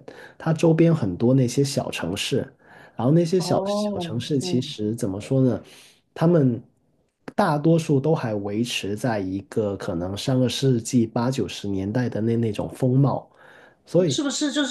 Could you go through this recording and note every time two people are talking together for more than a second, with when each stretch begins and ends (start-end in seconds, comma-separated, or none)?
3.4-4.7